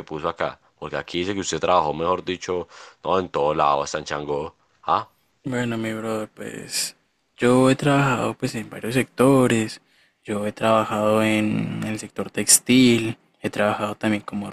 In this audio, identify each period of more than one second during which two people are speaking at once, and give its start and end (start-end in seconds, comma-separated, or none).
none